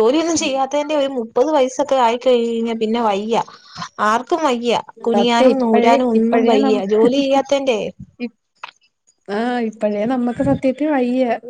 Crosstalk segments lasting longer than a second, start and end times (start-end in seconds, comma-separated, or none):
5.1-6.8